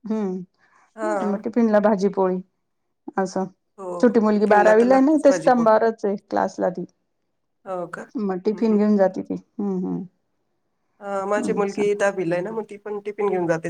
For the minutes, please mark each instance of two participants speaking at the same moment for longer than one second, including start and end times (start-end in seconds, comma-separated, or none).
4.0-5.7